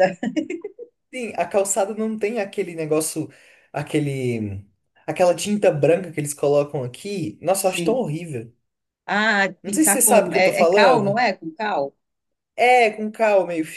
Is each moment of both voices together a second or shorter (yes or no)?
no